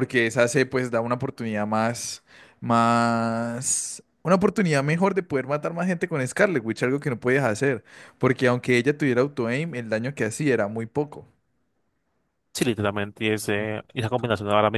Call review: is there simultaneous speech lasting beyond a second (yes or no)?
no